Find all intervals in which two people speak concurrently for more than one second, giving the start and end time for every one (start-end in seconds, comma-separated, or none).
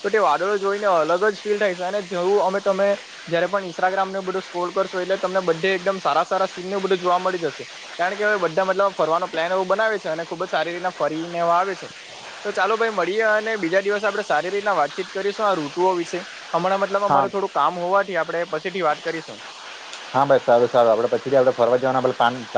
none